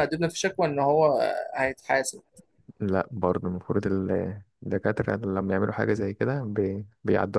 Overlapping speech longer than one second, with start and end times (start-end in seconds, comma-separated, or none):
none